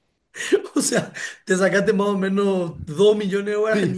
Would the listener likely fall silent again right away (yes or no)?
no